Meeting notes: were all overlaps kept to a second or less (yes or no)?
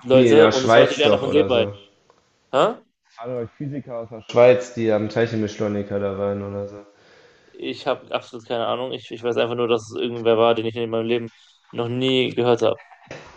no